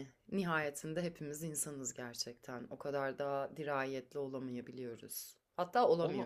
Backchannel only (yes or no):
no